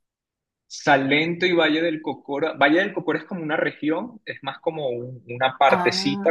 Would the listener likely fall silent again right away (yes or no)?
yes